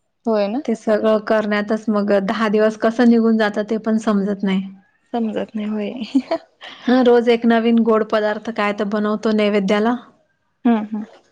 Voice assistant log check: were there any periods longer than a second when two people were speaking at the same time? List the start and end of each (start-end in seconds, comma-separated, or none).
none